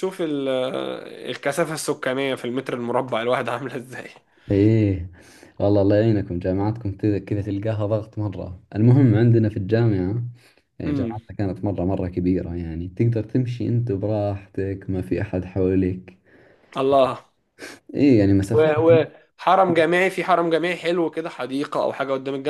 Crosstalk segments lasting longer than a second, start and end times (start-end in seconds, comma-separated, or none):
none